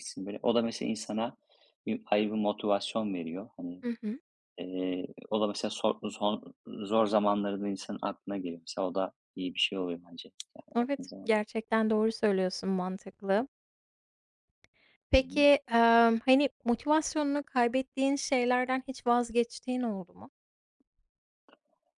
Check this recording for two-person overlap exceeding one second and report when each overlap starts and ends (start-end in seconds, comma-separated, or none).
none